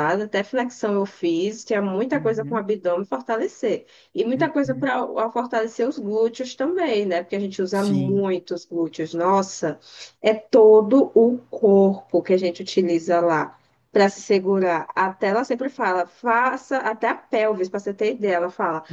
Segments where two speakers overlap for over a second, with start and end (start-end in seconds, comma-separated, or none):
none